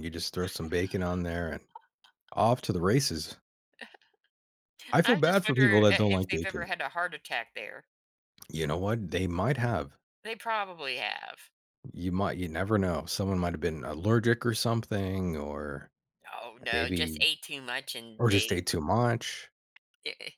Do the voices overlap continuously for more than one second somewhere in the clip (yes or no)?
yes